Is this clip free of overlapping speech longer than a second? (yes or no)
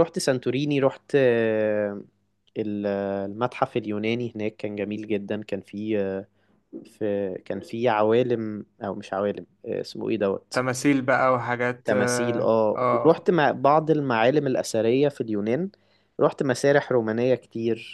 no